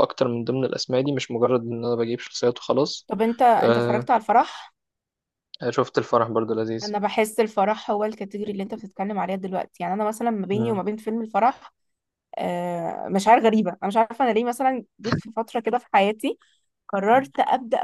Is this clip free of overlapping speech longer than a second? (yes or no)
yes